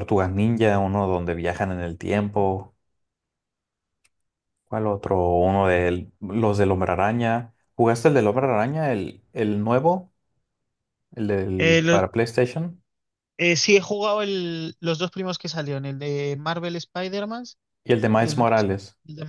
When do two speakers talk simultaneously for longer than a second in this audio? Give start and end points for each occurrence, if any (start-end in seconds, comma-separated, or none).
none